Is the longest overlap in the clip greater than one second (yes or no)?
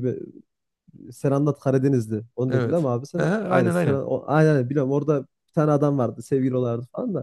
yes